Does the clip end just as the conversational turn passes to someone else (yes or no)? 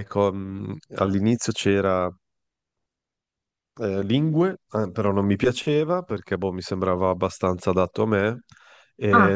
no